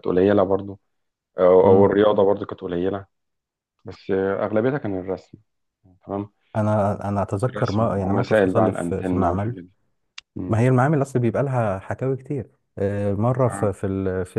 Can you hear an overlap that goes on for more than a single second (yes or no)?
yes